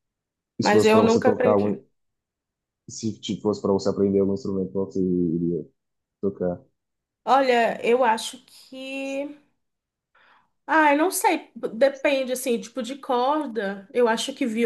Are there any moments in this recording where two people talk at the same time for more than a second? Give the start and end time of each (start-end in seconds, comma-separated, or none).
0.6-1.8